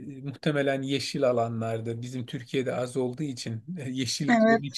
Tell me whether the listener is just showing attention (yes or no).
yes